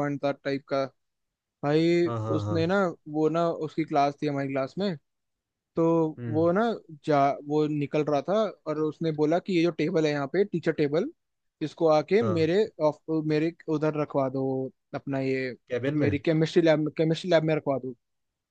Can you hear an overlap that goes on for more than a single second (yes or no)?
no